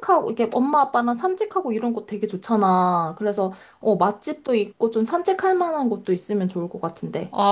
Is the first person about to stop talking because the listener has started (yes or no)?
yes